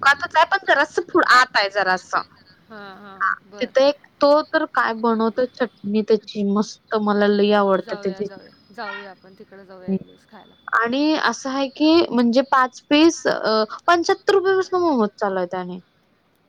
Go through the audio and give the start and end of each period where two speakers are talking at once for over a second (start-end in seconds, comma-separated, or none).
none